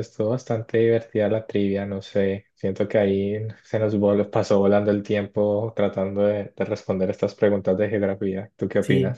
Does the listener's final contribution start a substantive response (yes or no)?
yes